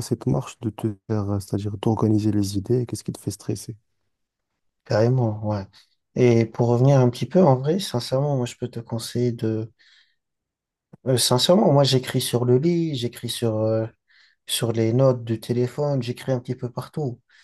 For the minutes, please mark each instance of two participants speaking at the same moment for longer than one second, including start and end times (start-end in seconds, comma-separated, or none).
none